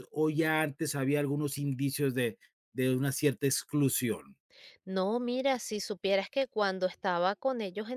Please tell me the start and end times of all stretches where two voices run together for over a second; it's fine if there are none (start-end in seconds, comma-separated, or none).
none